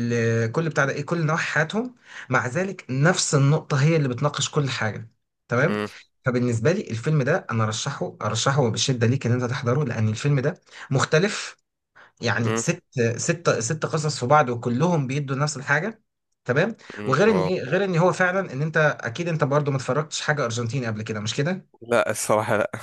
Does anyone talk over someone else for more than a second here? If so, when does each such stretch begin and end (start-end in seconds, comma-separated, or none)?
none